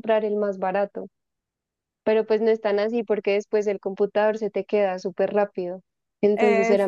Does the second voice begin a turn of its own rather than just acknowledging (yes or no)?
no